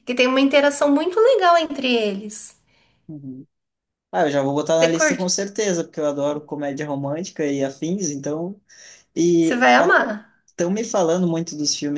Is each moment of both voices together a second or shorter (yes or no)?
yes